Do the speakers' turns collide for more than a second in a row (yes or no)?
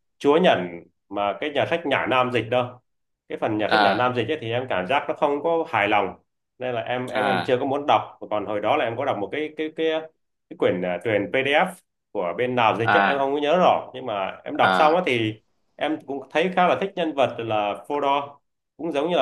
no